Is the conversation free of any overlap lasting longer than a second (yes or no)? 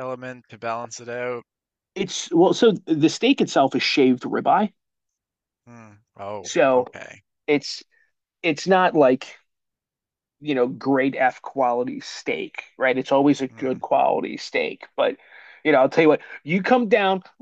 yes